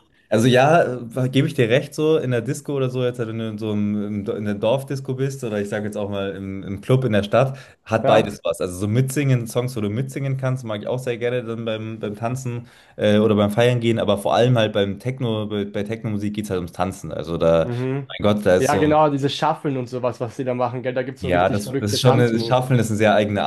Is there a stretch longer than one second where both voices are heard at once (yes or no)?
yes